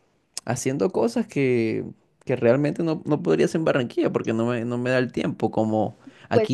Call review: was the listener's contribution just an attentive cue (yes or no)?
yes